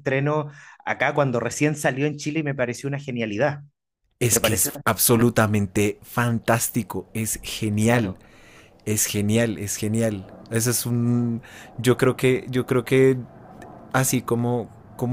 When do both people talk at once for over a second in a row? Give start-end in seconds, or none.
none